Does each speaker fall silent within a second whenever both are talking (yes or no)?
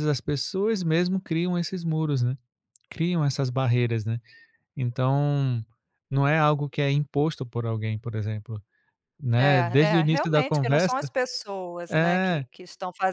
no